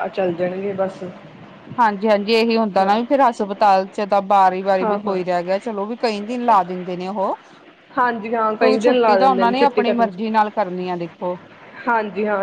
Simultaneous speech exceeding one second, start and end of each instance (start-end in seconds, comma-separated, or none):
8.6-10.2